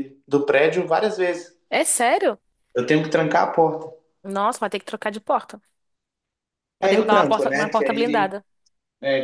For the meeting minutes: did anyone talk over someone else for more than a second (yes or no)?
yes